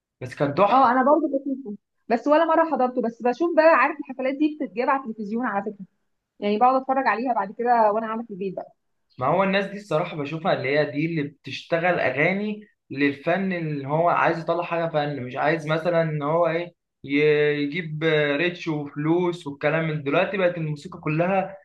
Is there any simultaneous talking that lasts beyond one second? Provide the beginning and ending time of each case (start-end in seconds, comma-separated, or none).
none